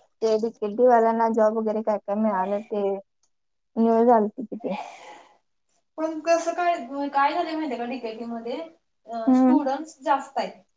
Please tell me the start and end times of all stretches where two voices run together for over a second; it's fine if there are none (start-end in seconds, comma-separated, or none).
none